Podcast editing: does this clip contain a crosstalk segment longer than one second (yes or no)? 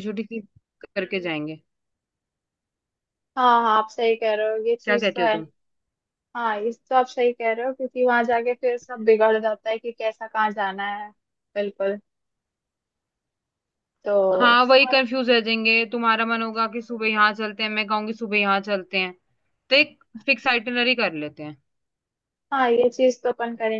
no